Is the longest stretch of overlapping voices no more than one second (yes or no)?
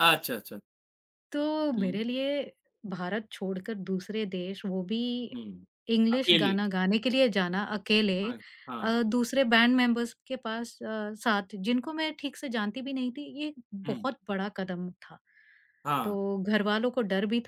yes